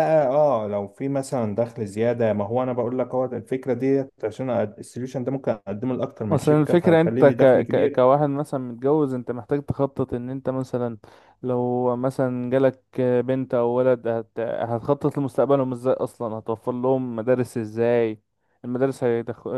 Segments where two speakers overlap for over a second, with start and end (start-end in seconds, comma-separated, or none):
6.3-8.0